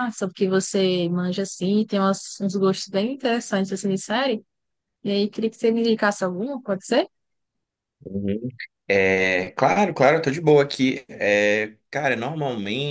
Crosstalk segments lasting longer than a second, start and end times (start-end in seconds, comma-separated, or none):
none